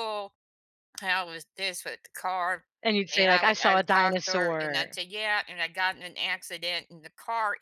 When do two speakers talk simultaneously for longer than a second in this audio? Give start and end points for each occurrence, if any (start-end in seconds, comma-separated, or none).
3.1-5.0